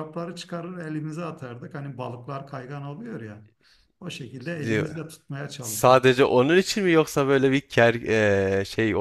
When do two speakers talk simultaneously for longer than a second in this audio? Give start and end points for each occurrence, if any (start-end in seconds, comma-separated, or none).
none